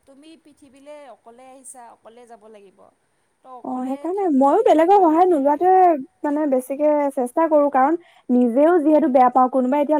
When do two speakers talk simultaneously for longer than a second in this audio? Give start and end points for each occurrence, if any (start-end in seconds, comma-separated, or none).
3.7-5.7